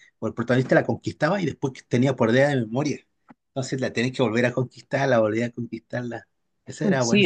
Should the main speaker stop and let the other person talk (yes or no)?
yes